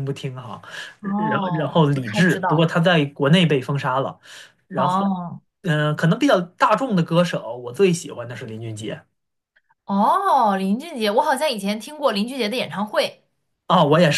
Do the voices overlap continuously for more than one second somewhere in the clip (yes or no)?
yes